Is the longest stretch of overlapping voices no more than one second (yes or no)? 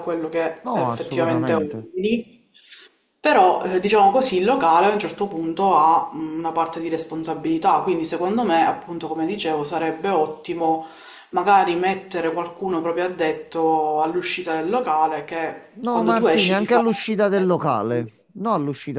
no